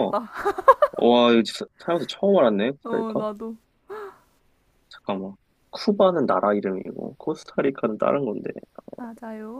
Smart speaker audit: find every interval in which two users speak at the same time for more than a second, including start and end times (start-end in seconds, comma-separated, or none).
none